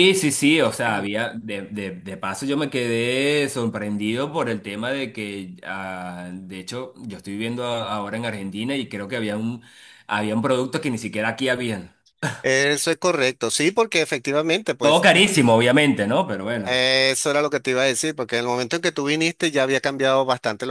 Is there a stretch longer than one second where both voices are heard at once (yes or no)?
no